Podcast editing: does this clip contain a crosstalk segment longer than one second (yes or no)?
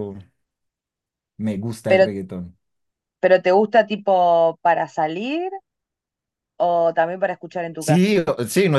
no